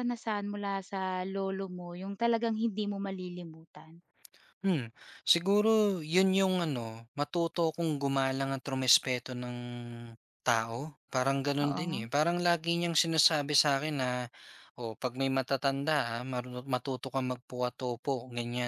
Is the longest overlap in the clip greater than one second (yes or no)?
no